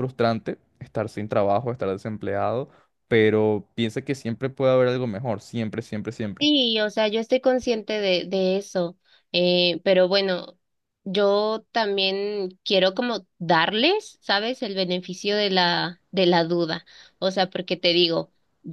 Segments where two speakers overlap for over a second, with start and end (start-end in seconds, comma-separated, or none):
none